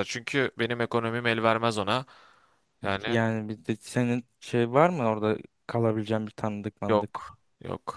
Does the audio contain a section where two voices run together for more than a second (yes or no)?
no